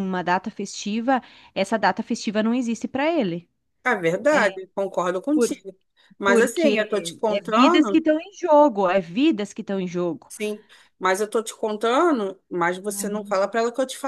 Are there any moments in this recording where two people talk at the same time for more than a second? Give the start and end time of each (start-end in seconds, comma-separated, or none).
6.2-8.0